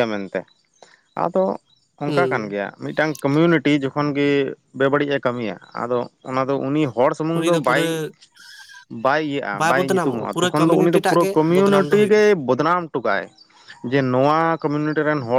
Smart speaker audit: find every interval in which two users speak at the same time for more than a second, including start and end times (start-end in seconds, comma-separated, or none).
9.8-12.2